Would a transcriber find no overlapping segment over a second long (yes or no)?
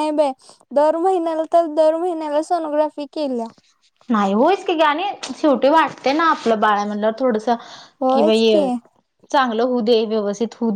yes